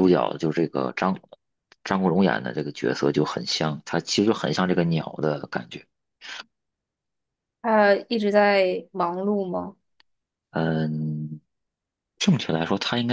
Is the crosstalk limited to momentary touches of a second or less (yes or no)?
yes